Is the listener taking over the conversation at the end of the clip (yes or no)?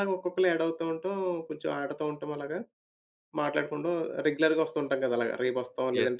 yes